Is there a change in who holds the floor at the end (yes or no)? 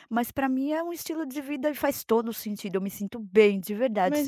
yes